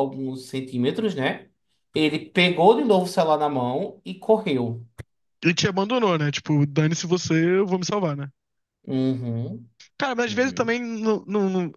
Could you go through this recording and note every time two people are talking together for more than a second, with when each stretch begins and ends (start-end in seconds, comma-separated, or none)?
none